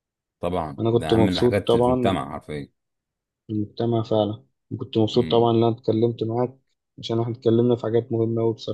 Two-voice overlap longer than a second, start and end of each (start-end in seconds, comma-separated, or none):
0.8-2.2